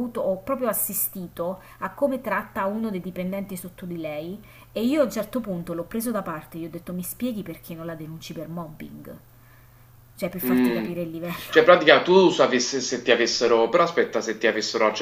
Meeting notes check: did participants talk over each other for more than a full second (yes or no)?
no